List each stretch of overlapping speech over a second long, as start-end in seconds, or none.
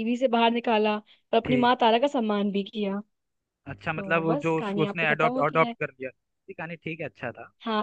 4.0-5.7